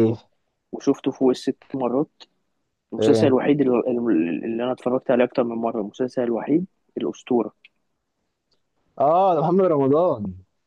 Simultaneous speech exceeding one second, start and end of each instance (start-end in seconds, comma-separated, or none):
none